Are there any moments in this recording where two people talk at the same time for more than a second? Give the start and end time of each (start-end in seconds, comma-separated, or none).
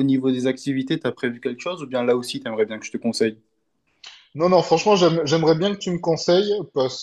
none